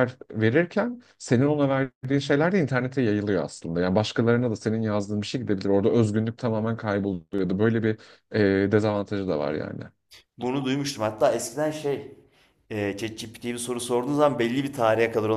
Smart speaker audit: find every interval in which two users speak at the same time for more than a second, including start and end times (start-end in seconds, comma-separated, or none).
none